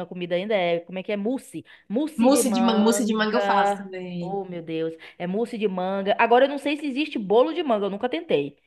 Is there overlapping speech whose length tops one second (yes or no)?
yes